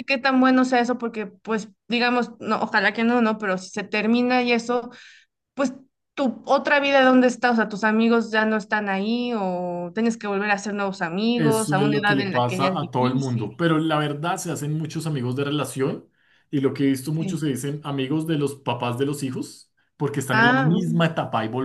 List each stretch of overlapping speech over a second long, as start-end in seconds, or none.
11.3-13.5